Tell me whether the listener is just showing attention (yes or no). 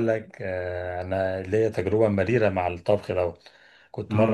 yes